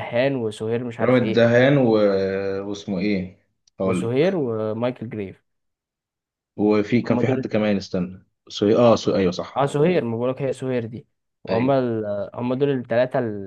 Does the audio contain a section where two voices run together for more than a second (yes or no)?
no